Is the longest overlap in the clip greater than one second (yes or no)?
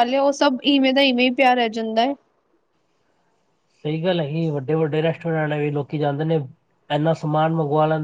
no